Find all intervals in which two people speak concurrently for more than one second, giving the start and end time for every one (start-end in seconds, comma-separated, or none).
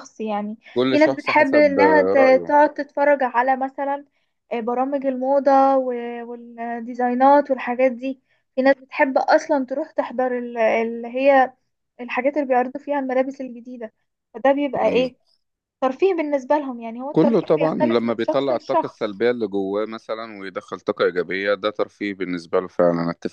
0.7-2.5, 17.1-19.2